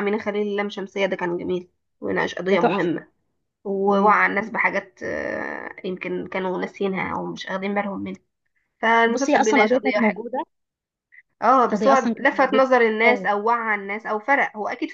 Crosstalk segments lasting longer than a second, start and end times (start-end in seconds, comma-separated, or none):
9.1-10.3, 11.6-13.3